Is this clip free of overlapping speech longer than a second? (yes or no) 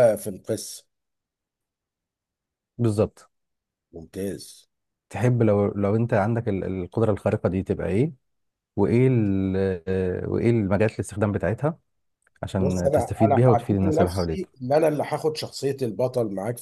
no